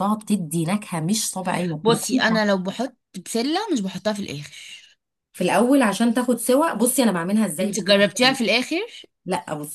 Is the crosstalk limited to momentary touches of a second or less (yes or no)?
yes